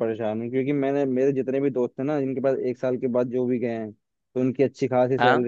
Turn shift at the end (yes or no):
no